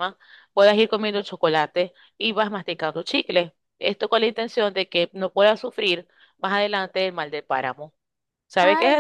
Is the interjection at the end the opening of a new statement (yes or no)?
yes